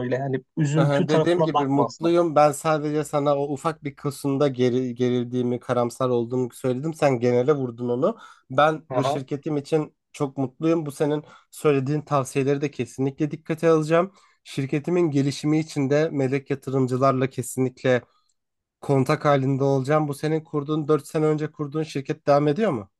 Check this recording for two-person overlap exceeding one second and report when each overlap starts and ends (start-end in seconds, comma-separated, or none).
0.8-2.1